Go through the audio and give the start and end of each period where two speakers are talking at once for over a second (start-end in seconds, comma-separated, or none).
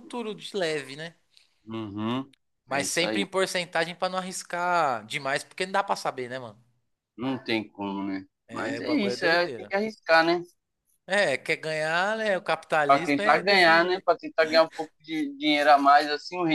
8.5-9.7, 12.9-14.1